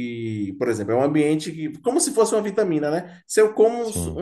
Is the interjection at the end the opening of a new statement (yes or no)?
no